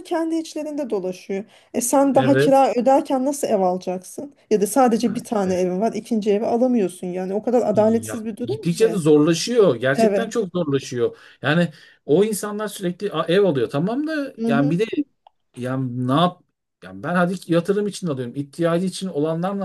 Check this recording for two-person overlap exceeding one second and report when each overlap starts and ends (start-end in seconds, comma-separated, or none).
7.7-9.0